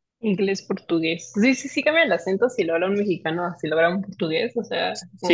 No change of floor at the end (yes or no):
no